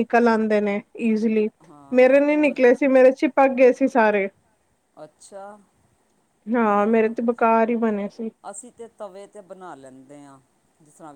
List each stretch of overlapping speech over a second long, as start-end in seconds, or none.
none